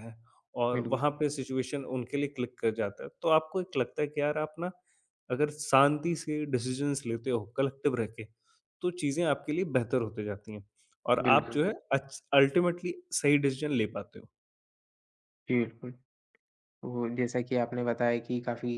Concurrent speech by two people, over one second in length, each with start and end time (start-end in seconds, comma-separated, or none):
none